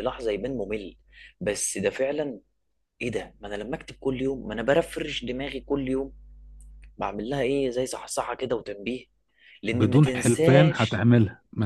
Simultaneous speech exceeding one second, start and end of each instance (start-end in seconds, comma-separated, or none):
9.7-11.1